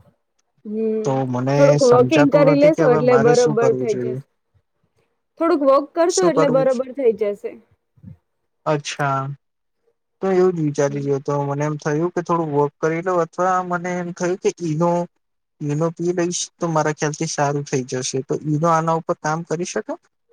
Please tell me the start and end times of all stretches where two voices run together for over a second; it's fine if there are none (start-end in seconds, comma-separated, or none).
1.6-4.1